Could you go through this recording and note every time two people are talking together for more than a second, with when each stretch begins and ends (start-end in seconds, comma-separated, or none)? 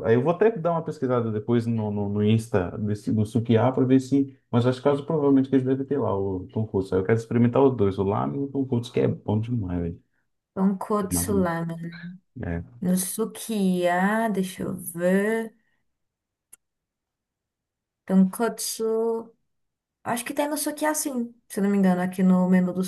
none